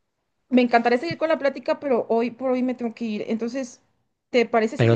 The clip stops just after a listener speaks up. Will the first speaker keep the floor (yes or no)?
no